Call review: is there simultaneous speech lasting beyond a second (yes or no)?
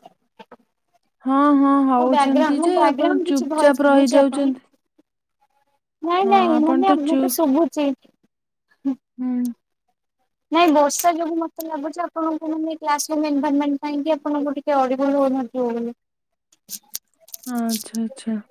yes